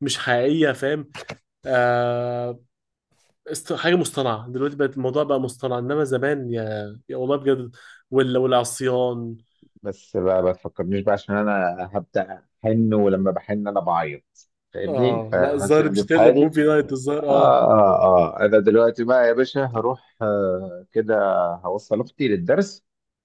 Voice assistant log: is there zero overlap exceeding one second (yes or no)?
no